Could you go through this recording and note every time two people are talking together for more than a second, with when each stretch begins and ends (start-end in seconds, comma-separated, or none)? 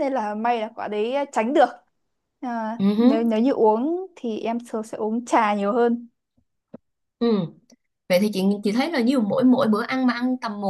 none